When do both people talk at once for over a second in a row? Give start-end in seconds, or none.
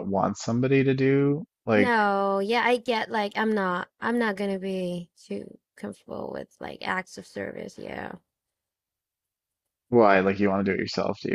none